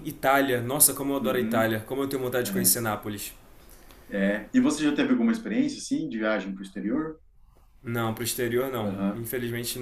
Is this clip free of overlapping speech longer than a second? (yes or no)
yes